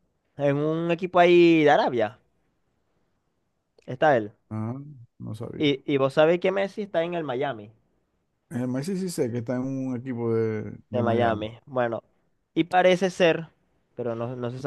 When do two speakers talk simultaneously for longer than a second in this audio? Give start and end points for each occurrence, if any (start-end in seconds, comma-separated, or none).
none